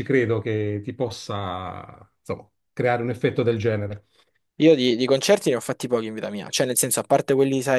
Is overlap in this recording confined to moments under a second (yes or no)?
yes